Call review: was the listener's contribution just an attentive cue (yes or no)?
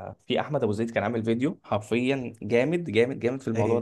yes